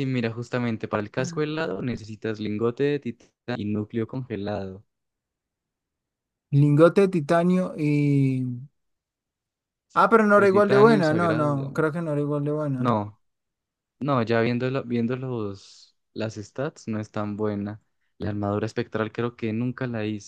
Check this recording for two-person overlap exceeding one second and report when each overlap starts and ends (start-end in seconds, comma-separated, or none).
9.9-12.0